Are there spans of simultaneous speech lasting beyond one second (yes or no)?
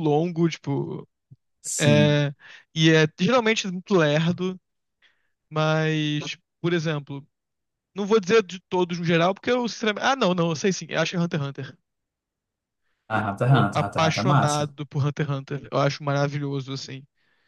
yes